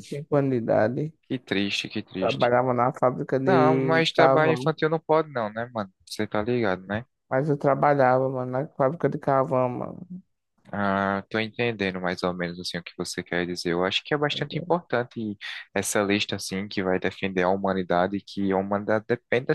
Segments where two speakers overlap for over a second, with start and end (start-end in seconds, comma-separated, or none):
3.4-4.7